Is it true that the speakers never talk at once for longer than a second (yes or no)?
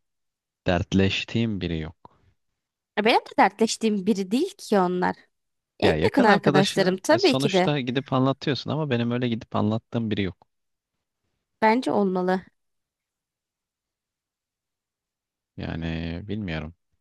no